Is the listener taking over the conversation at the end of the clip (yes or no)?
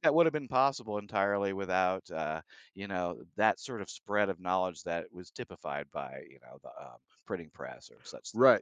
yes